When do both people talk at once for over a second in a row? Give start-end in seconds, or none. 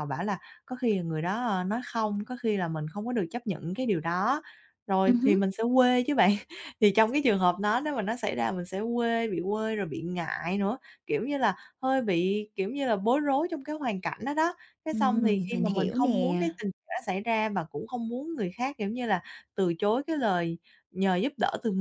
14.9-16.4